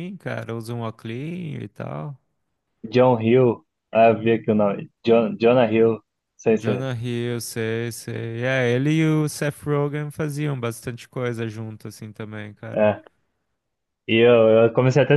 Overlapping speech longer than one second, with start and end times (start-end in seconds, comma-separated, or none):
none